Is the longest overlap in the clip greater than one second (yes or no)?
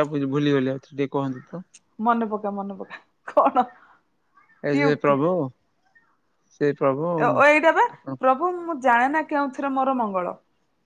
no